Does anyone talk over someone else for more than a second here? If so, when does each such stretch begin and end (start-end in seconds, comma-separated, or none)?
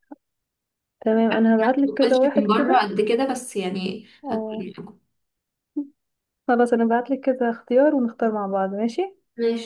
1.4-2.9